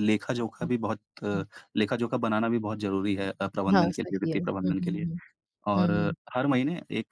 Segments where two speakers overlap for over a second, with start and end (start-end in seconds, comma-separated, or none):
3.7-5.0